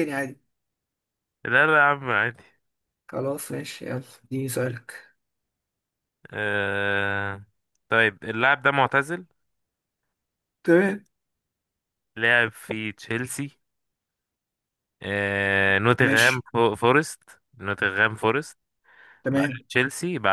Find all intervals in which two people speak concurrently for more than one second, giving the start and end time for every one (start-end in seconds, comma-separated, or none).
none